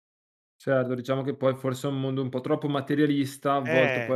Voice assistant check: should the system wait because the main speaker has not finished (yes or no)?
yes